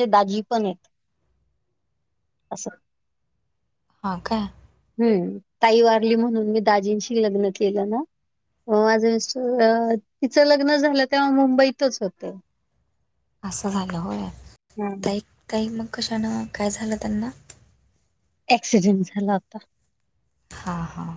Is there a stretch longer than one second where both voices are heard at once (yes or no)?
no